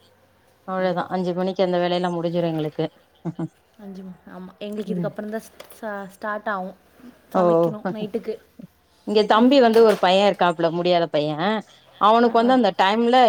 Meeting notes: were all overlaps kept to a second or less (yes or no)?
yes